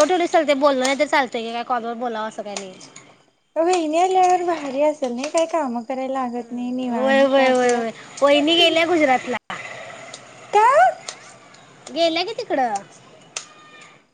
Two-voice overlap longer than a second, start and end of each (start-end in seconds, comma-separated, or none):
6.9-8.7